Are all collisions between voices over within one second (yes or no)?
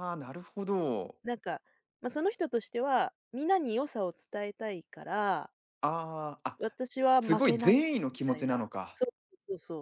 no